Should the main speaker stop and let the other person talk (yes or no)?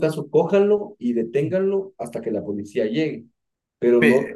no